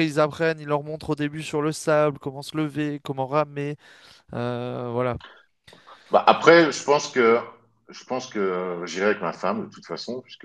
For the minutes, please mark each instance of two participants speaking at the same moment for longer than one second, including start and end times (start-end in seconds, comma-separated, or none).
none